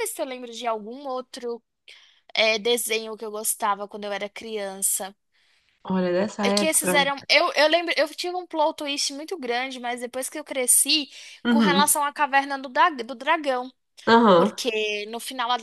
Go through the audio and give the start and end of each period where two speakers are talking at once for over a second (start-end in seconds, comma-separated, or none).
none